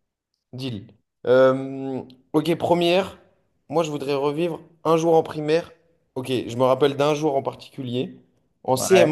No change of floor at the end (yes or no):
yes